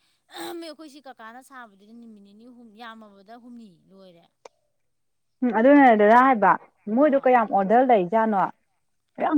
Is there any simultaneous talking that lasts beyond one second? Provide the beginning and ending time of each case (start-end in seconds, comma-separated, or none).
none